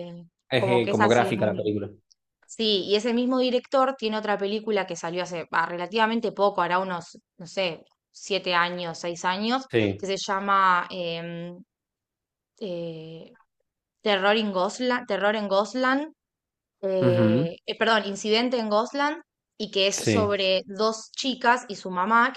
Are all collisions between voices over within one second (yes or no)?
no